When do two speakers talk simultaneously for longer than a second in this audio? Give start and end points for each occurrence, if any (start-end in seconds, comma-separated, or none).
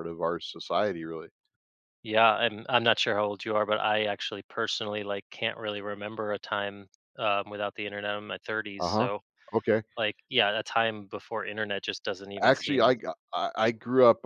none